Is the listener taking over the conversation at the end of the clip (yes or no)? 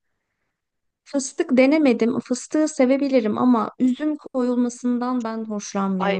yes